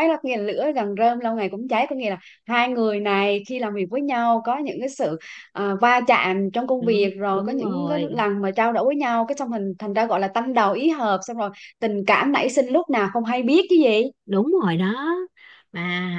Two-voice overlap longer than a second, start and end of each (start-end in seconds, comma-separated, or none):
6.8-8.2